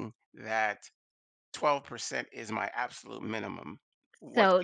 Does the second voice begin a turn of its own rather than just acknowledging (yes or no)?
yes